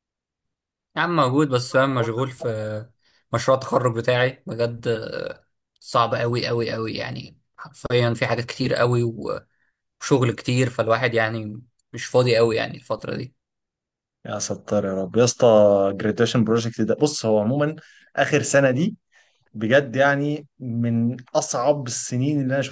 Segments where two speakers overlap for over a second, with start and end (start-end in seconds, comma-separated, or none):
none